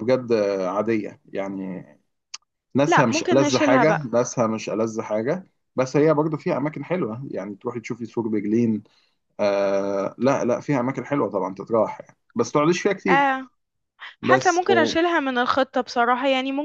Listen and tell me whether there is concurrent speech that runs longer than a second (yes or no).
yes